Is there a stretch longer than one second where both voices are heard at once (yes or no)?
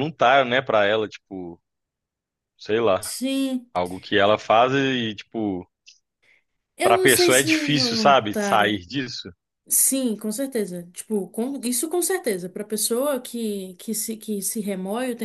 yes